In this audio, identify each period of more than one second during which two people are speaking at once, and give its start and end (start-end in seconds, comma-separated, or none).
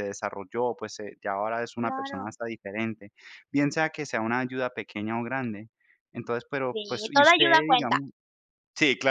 6.7-8.0